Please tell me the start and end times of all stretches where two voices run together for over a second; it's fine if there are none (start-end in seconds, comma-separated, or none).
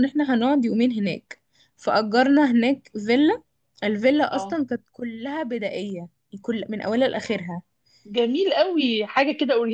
none